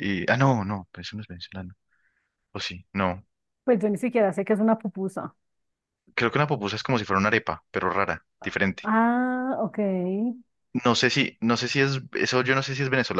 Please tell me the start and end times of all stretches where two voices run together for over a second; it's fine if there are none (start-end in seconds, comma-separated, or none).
none